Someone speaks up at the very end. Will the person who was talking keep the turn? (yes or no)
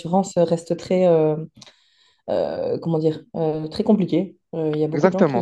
no